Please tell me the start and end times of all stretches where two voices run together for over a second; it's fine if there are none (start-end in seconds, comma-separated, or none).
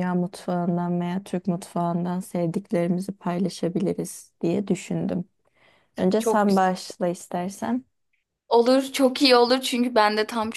none